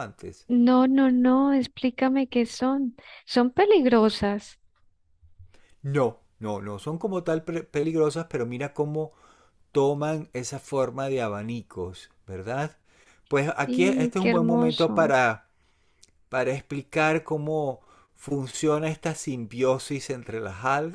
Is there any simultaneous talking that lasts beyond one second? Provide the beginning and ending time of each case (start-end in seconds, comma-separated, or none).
13.7-15.1